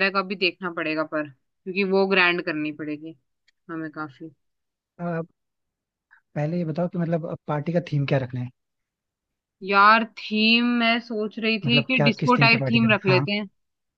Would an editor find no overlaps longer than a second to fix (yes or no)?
no